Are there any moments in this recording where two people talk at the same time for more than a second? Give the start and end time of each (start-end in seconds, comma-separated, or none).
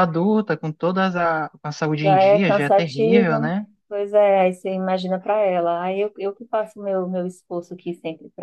2.0-3.4